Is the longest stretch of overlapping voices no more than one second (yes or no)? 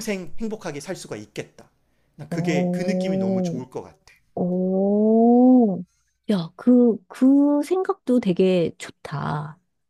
no